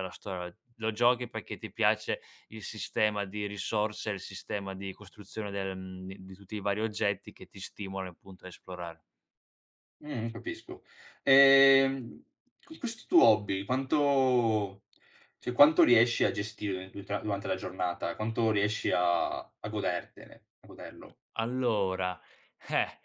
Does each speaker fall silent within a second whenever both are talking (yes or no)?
yes